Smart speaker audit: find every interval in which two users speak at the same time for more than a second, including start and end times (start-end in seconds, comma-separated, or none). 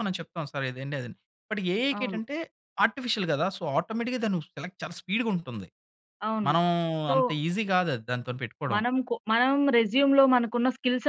none